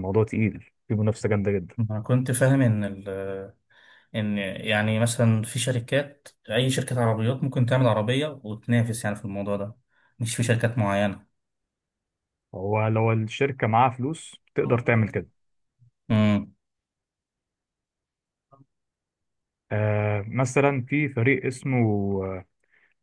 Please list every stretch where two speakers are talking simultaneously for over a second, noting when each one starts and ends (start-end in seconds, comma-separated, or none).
none